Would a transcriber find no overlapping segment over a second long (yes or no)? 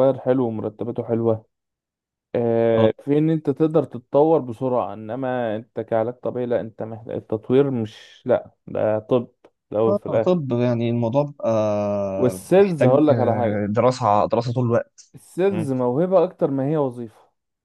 no